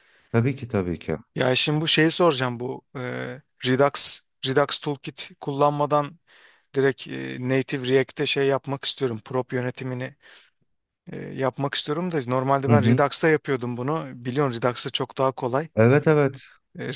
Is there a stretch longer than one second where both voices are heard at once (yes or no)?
no